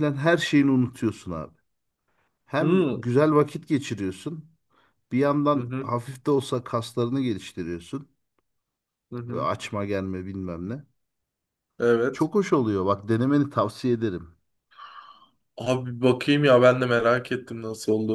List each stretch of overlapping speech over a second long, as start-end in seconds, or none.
none